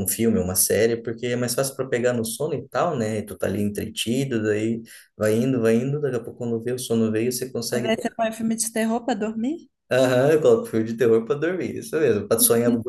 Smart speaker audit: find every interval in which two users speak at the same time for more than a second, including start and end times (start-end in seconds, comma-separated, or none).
none